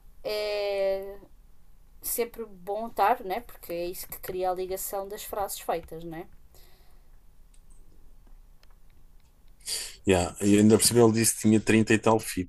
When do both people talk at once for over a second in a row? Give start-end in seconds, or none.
none